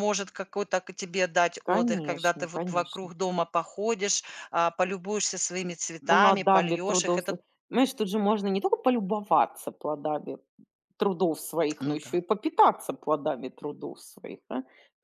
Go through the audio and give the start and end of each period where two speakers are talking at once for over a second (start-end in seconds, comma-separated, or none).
1.6-3.1, 6.1-7.4